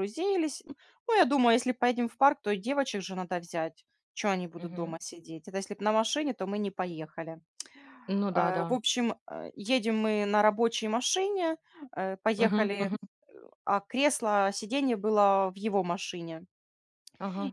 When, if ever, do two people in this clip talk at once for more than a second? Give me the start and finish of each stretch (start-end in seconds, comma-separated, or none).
none